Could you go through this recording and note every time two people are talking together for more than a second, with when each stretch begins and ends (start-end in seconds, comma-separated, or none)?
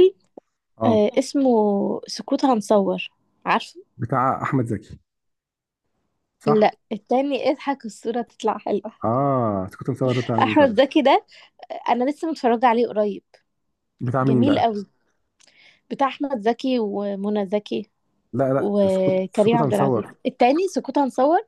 18.6-20.1